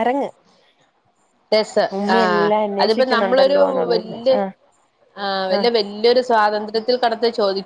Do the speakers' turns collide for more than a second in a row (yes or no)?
yes